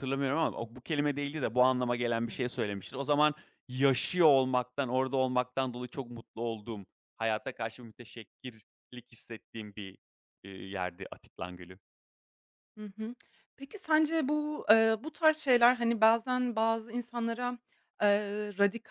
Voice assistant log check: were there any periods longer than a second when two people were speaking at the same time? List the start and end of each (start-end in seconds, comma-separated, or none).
none